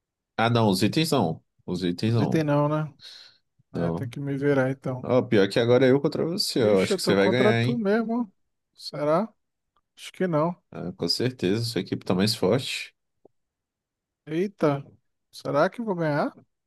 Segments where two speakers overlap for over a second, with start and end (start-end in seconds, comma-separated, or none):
6.6-7.8